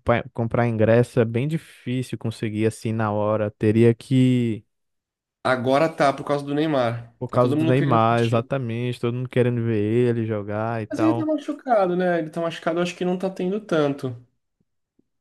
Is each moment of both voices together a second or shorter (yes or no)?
no